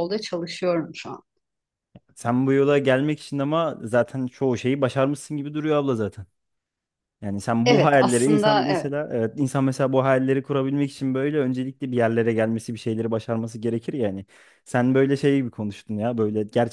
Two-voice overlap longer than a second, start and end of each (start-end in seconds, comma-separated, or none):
7.7-8.9